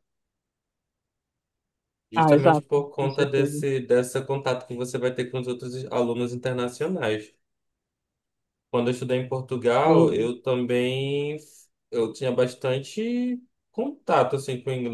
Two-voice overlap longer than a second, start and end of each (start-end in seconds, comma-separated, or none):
2.1-3.6